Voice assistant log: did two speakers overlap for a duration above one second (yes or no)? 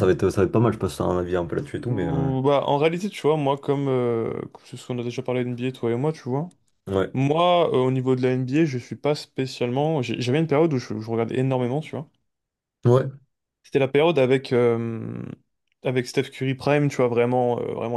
no